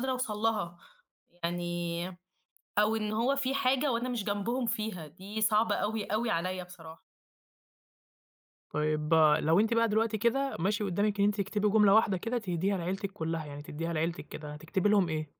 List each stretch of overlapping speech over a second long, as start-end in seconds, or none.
none